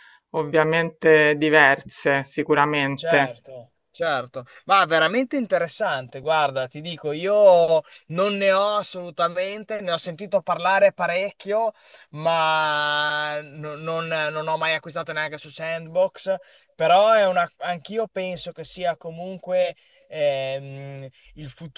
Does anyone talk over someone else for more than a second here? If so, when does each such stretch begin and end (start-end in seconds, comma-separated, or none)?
none